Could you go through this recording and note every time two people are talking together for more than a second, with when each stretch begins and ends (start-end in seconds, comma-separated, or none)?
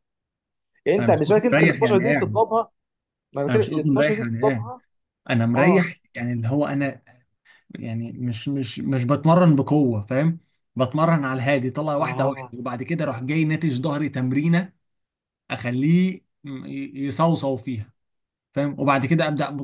1.0-2.4, 3.5-4.7